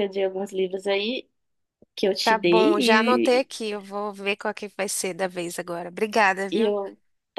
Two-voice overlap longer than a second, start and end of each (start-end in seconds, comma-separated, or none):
2.2-3.5